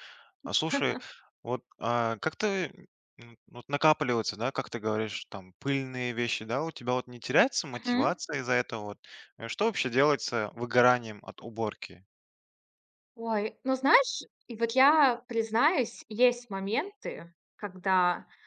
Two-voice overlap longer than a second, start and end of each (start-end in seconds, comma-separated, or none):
none